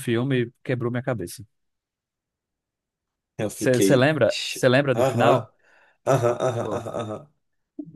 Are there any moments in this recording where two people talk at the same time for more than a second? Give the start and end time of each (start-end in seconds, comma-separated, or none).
3.5-5.5